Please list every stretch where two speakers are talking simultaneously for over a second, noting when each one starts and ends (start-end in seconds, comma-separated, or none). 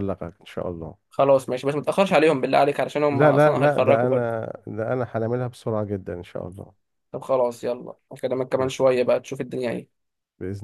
3.1-4.4